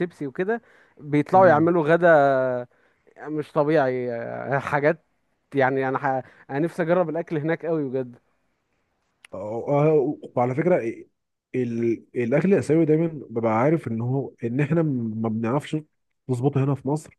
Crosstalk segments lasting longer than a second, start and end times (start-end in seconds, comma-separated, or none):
none